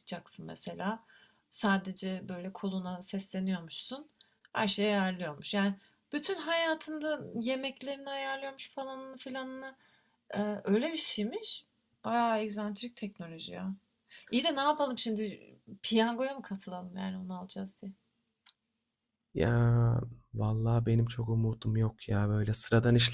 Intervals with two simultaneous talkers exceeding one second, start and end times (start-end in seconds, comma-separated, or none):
none